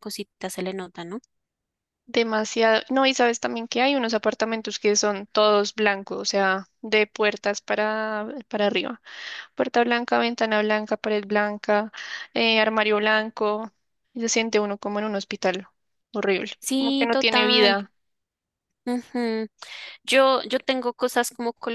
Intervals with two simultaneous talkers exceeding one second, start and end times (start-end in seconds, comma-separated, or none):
16.6-17.8